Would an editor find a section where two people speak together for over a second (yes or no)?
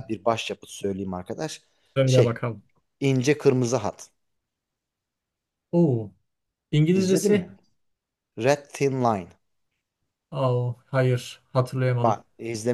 no